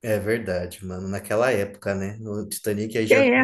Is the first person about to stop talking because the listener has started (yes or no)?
no